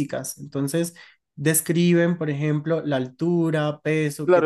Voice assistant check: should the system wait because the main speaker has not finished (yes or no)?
no